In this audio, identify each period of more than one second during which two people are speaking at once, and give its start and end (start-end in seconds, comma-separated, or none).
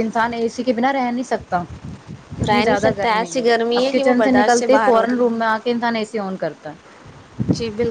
2.5-5.4